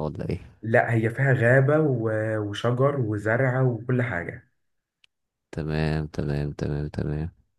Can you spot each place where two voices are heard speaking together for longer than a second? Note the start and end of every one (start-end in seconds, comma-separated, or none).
none